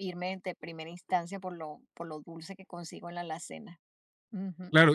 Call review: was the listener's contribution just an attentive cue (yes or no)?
no